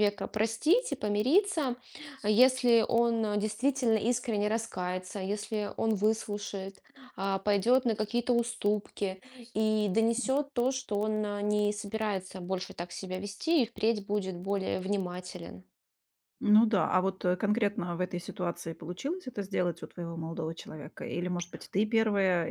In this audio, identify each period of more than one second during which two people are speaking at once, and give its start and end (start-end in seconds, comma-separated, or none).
none